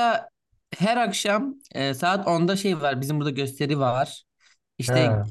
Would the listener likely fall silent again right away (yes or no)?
yes